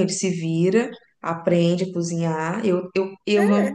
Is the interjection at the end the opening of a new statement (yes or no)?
no